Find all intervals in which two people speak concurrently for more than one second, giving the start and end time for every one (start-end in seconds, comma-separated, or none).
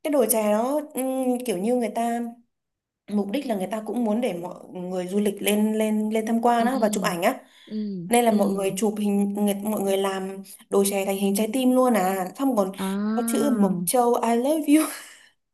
none